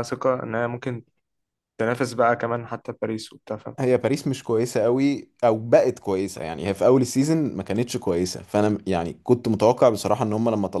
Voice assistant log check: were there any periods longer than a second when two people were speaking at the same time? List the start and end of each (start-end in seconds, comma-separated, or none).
none